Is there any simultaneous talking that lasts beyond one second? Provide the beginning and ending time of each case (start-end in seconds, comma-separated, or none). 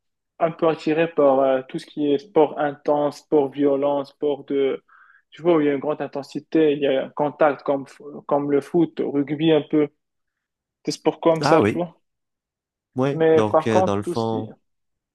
13.1-14.5